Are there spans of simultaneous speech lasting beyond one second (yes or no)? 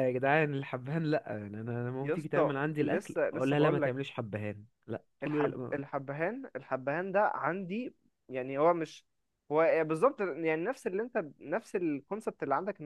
yes